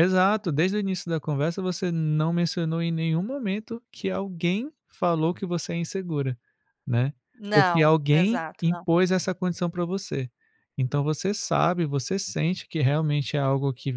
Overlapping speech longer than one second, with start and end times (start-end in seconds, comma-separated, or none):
7.5-8.8